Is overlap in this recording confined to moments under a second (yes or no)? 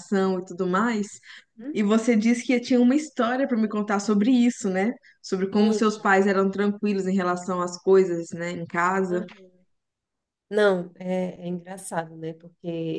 yes